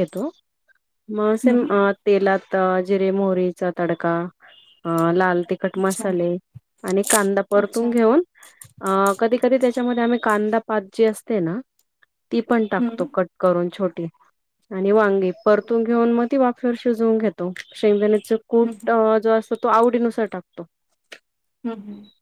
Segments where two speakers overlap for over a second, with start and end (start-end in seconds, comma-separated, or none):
none